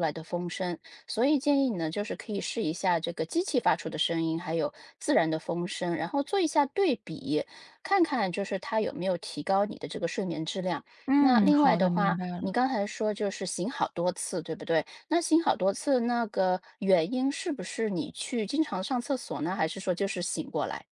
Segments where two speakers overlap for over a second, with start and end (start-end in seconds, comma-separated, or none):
11.1-12.6